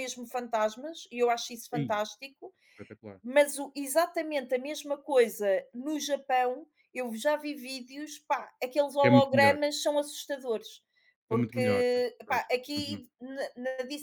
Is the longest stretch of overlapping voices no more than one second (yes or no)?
no